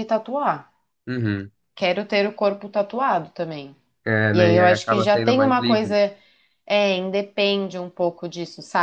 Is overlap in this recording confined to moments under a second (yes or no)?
no